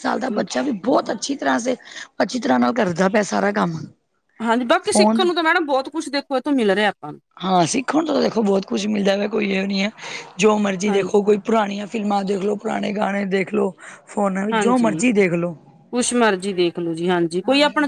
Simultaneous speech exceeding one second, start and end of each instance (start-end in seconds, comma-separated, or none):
none